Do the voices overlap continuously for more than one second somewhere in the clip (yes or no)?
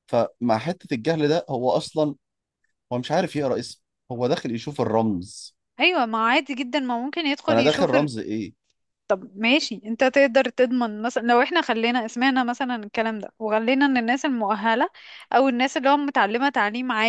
no